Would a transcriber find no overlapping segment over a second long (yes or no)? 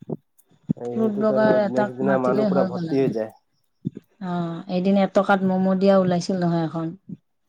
no